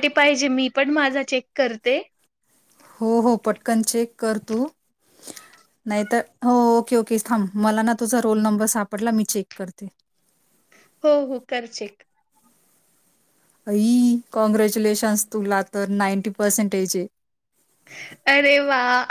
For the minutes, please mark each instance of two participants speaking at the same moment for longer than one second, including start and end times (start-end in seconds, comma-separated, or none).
none